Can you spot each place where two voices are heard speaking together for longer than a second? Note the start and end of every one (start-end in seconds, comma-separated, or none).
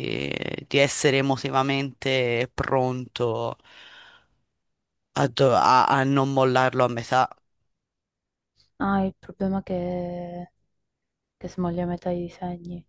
none